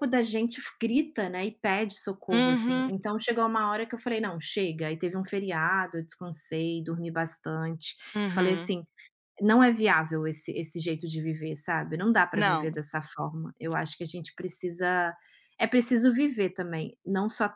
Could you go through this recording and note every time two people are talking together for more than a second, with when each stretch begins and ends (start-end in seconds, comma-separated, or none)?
none